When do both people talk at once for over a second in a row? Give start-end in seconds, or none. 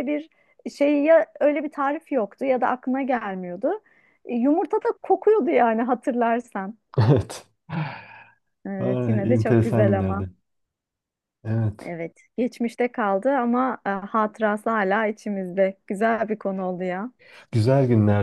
8.8-10.3